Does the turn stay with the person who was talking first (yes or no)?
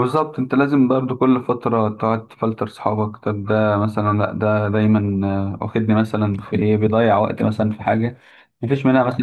yes